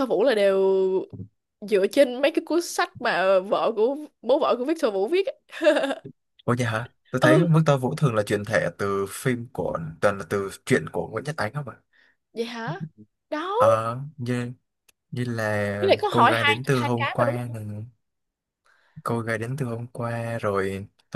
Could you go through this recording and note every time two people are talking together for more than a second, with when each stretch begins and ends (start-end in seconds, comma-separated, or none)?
15.8-17.6